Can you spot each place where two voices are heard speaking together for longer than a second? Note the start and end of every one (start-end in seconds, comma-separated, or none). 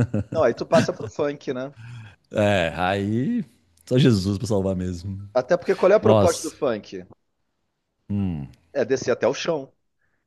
none